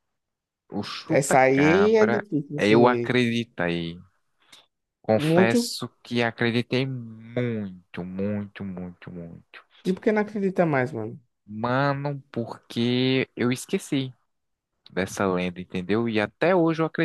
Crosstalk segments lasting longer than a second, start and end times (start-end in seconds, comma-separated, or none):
1.1-3.2